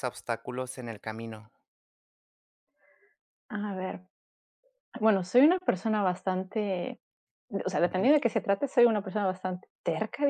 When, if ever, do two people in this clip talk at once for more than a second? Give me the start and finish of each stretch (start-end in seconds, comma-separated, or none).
none